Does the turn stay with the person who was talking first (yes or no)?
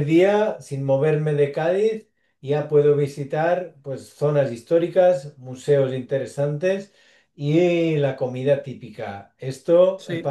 yes